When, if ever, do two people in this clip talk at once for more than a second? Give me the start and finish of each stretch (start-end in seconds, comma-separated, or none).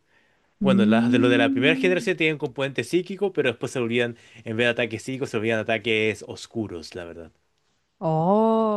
0.6-2.1